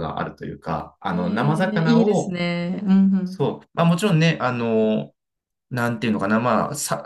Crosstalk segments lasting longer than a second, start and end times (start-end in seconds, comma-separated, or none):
1.1-2.4